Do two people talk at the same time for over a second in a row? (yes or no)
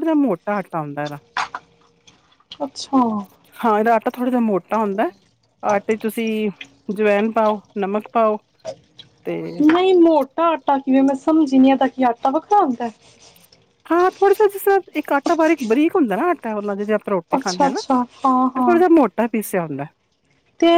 no